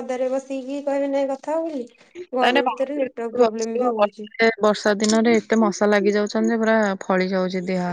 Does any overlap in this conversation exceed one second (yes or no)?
yes